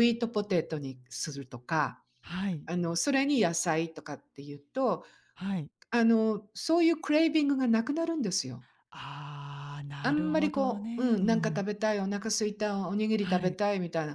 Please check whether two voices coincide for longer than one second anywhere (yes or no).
yes